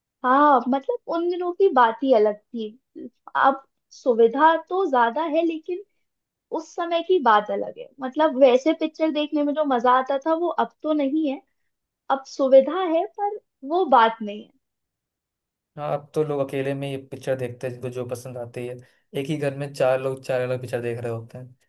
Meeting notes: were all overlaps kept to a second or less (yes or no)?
yes